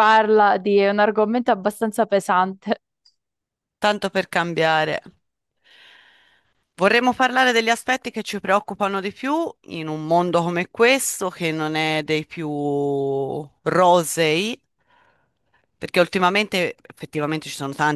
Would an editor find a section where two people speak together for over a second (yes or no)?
no